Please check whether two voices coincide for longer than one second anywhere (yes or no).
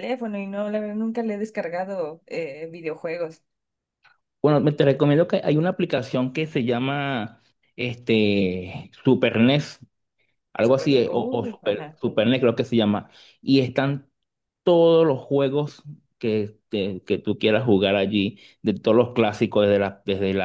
yes